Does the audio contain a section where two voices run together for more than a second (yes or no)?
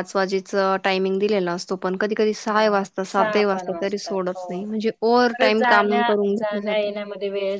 yes